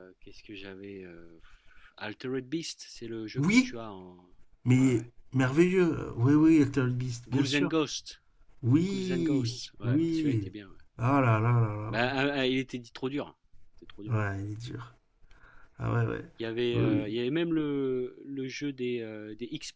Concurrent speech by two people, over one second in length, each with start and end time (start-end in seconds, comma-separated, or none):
8.9-10.5